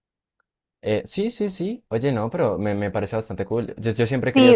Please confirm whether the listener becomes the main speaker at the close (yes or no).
yes